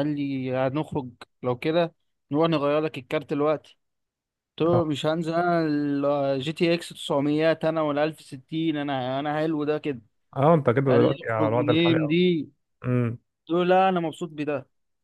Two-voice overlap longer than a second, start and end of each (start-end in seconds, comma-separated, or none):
10.9-12.2